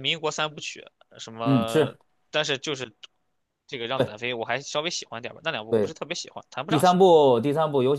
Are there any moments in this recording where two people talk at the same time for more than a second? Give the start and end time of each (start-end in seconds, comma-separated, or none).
none